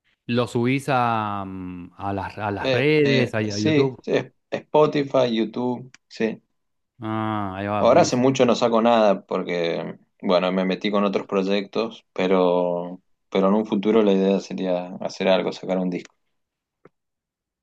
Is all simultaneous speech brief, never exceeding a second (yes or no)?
no